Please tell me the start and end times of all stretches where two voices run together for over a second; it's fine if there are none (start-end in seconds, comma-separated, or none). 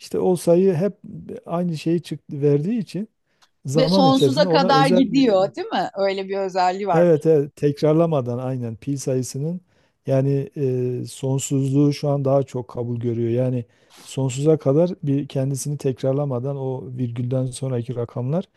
3.8-5.3